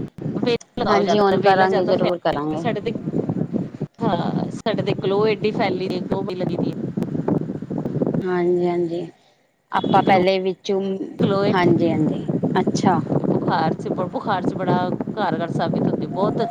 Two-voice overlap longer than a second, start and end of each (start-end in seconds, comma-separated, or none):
0.9-2.7